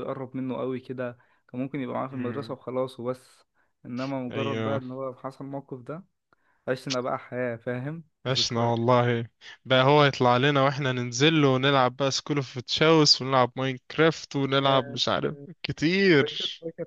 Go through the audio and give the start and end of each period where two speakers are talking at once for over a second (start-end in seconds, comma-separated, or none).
none